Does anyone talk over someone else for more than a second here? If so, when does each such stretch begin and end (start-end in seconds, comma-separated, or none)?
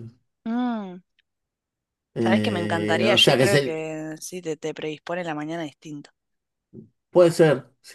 2.2-3.9